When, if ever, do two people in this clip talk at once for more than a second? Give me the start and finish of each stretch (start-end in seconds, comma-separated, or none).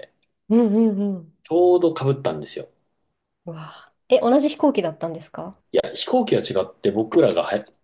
none